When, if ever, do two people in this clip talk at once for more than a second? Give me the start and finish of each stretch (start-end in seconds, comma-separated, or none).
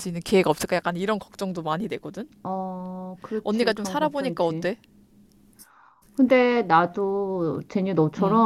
3.4-4.7